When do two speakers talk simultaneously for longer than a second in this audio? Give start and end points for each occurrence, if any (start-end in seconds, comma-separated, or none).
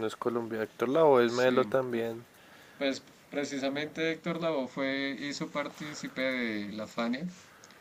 none